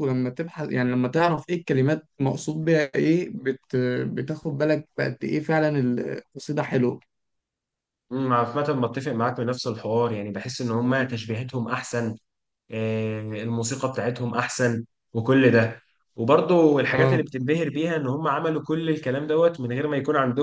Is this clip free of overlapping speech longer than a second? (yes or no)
yes